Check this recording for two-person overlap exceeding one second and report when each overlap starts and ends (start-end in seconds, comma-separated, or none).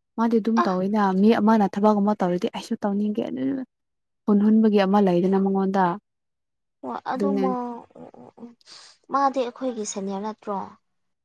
none